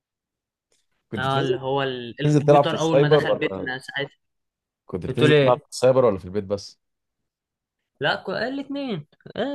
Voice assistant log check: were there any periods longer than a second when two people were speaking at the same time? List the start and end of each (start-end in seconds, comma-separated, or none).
2.2-3.7